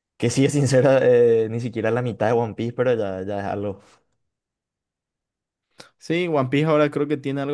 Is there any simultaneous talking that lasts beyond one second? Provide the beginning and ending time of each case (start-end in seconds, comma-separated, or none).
none